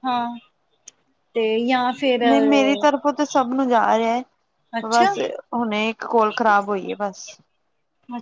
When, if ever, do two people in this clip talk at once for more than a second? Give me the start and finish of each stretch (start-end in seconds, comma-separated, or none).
none